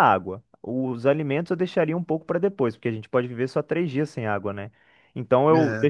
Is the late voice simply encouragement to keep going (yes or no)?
yes